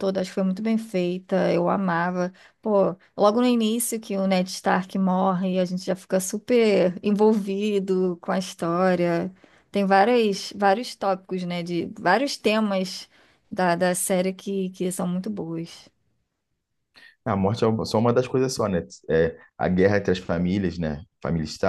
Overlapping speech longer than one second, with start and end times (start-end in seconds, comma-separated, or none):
none